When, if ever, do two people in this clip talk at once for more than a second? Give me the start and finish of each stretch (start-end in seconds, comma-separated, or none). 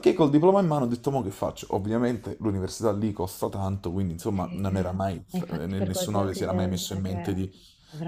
4.3-7.5